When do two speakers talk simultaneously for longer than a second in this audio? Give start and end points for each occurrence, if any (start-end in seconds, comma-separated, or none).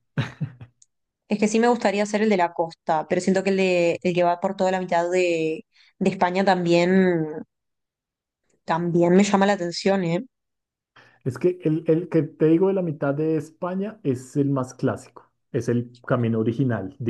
none